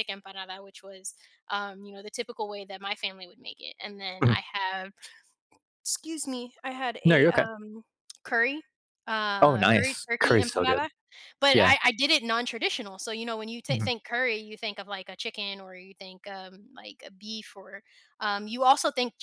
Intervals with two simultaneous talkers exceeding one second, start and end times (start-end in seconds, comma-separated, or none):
9.4-10.9